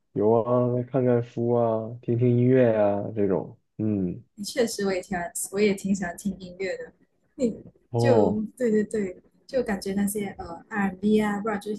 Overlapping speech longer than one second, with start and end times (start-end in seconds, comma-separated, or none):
none